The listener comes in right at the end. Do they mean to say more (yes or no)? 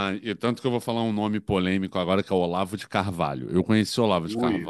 no